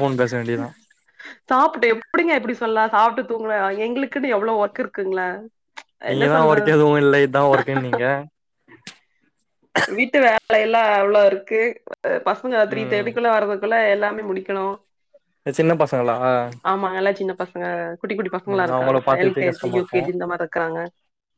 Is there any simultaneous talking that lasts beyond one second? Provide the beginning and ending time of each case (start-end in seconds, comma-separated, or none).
18.5-20.0